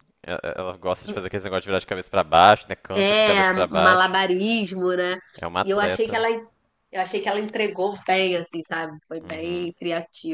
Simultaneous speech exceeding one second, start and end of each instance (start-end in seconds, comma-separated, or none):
2.9-4.2